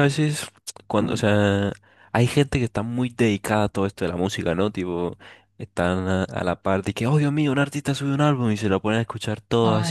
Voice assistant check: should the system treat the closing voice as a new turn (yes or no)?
no